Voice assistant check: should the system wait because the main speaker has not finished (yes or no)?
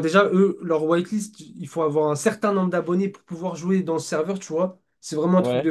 yes